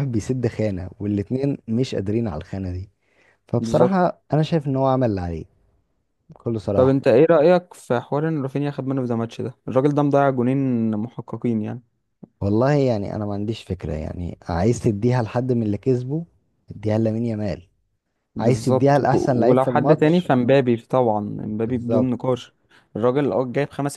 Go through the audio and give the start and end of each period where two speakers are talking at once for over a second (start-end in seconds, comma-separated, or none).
18.4-20.3